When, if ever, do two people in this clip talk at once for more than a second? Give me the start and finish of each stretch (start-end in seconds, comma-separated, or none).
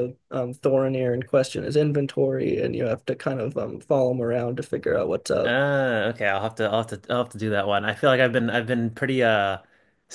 none